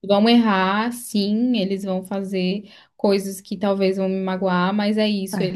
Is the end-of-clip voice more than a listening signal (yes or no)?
no